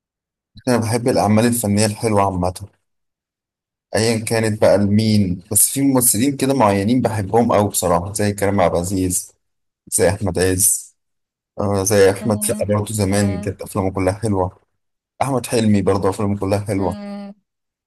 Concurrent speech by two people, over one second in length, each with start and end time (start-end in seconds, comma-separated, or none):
12.2-13.6